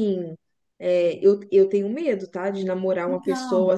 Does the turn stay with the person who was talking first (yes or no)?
yes